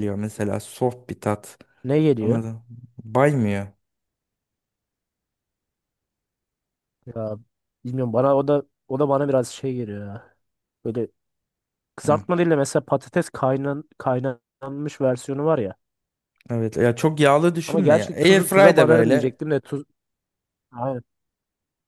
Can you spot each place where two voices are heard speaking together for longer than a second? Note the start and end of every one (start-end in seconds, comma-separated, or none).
17.6-19.4